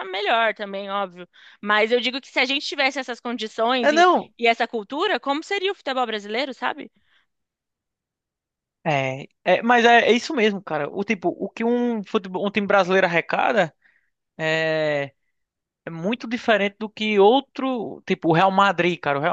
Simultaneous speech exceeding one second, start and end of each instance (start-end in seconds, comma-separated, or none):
none